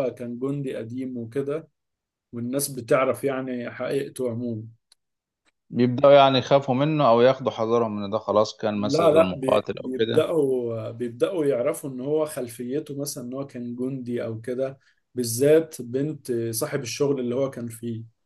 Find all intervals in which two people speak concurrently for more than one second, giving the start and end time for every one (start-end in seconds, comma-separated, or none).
8.7-10.2